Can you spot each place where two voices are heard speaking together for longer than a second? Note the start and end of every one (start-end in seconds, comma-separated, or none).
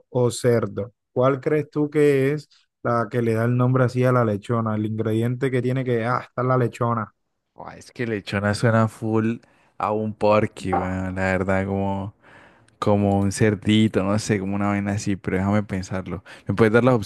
none